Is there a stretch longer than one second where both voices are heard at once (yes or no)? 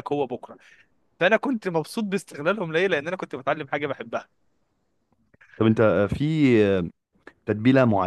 no